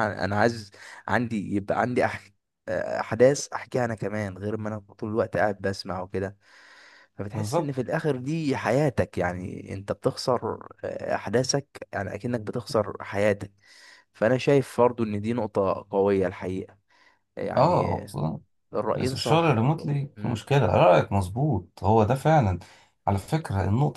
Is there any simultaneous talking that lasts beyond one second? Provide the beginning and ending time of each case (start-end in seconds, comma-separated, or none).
19.0-20.5